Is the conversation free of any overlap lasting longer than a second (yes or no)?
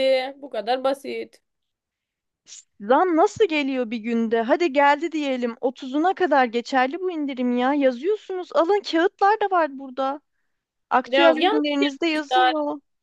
no